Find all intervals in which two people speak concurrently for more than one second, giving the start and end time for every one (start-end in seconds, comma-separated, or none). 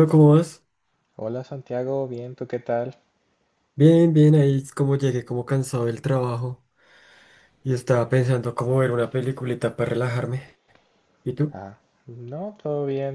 none